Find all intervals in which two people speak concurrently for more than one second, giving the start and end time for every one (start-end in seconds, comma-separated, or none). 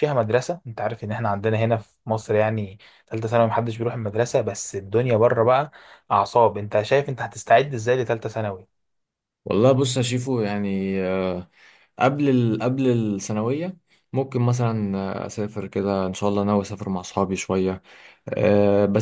none